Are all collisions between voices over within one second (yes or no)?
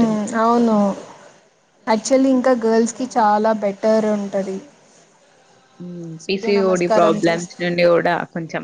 no